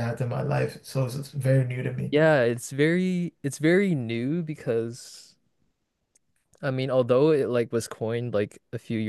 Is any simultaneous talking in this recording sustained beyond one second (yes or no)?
no